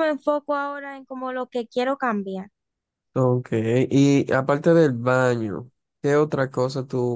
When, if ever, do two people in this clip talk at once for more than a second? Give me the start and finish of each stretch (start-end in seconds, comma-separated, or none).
none